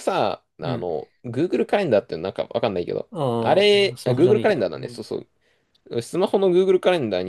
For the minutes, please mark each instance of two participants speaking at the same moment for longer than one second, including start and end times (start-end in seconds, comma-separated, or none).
3.1-5.0